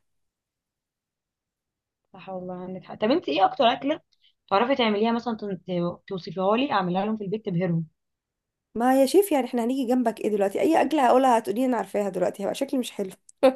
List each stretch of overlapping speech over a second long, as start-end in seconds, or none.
none